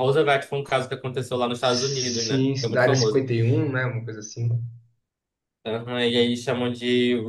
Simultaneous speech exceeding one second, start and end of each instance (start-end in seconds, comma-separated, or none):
1.6-3.2